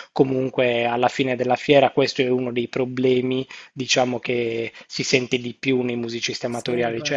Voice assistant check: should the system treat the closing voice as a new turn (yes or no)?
no